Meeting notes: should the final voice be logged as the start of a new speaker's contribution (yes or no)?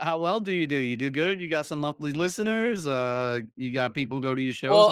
yes